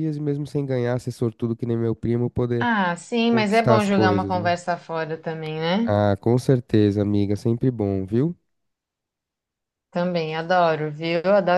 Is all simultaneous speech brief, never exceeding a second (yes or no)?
no